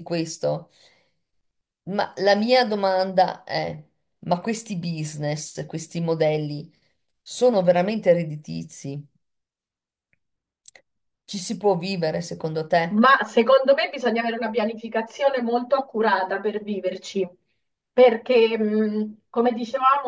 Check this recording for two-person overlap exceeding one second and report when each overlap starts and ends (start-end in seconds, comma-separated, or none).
none